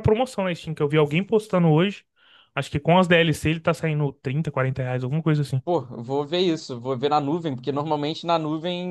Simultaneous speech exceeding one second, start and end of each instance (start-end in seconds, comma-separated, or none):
none